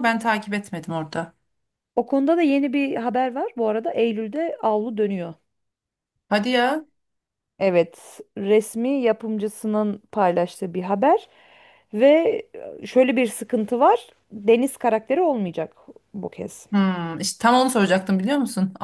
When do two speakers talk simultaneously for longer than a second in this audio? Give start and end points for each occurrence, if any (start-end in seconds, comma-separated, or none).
none